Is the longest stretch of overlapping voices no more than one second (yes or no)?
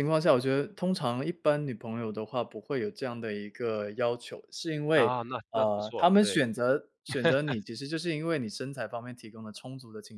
no